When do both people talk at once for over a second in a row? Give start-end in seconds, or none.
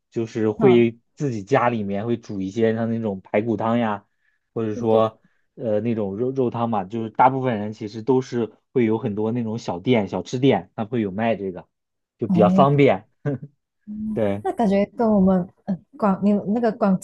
none